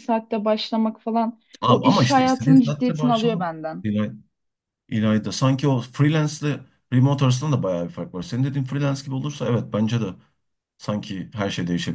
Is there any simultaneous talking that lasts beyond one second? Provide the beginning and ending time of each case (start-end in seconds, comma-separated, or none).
1.6-3.8